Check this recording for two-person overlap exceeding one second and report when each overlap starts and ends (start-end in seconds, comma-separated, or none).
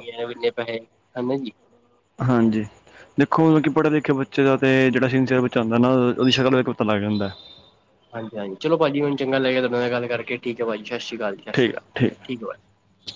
none